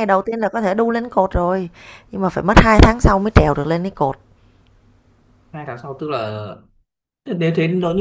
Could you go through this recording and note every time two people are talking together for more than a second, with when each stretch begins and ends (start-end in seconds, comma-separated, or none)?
none